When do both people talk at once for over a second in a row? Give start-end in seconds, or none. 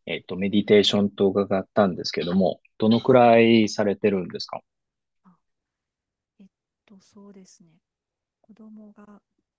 none